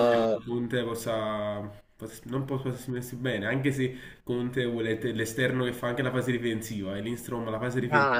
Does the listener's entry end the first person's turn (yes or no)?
yes